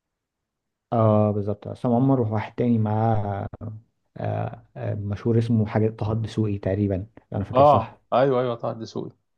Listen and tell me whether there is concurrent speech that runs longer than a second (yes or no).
no